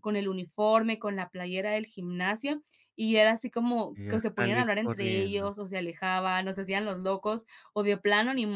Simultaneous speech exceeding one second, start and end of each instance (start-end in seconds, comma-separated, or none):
3.9-5.5